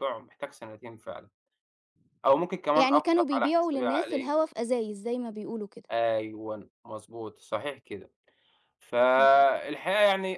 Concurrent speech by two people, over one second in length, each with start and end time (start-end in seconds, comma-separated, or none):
2.7-4.3